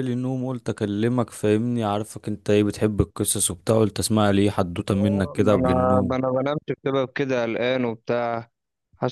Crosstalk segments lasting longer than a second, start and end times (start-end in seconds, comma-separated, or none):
4.9-6.2